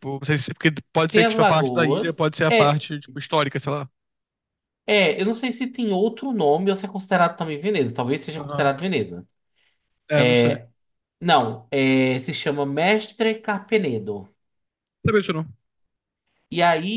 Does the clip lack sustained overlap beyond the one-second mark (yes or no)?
no